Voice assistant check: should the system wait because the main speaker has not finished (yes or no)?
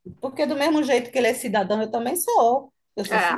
no